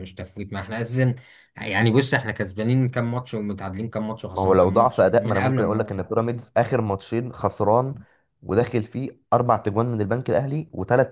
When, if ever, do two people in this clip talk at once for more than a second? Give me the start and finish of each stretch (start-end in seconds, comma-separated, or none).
4.3-6.1